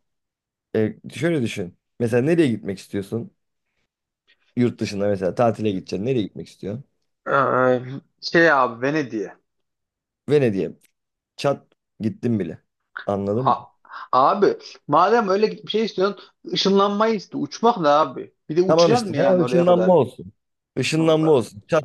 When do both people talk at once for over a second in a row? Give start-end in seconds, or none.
18.7-20.0